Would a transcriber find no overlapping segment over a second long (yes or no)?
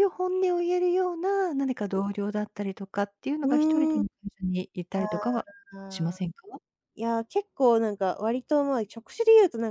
yes